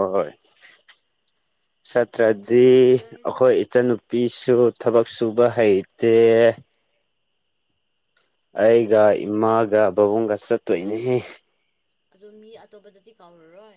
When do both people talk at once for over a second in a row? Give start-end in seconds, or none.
none